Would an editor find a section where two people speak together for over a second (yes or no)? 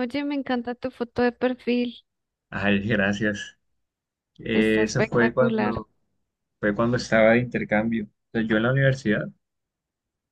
yes